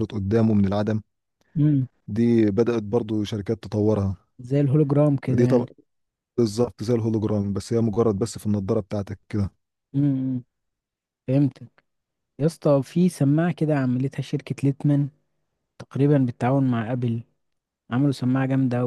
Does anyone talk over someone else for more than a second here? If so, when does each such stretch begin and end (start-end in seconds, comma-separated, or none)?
none